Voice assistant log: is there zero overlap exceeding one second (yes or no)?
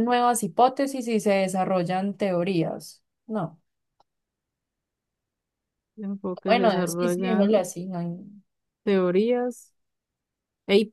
no